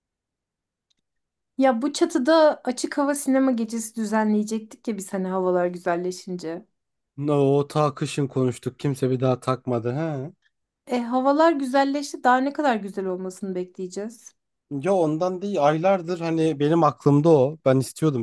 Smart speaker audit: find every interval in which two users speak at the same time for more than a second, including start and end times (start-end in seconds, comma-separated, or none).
none